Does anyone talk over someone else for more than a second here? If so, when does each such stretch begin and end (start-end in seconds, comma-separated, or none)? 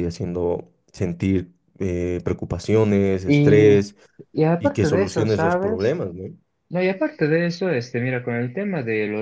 4.6-6.0